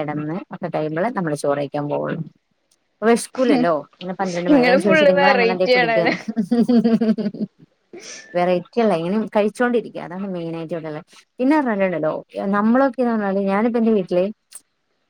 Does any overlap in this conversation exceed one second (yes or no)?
yes